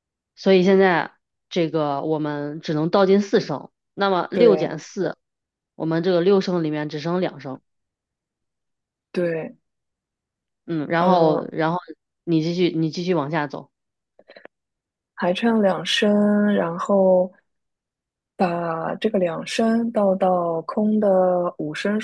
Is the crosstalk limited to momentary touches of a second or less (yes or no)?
yes